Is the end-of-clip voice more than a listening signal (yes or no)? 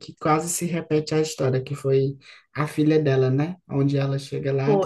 no